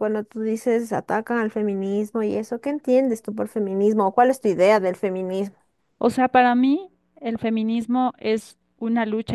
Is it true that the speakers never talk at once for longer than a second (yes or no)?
yes